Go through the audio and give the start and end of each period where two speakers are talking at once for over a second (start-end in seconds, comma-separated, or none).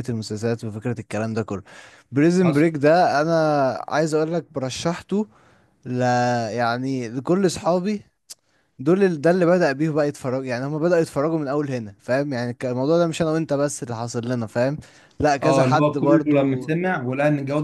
15.4-16.7